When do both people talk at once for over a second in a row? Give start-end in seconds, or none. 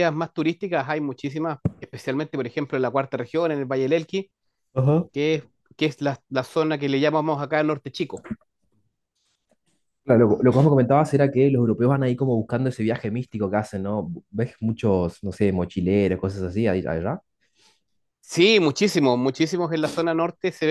none